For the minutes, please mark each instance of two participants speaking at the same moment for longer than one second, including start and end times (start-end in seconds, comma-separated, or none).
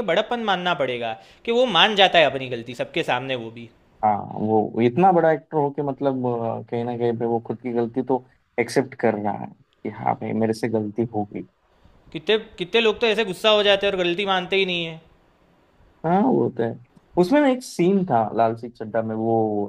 none